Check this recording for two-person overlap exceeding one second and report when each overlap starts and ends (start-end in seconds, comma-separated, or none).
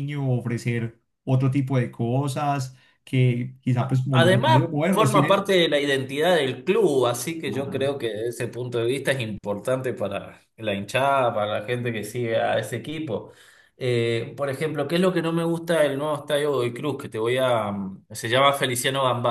3.8-5.5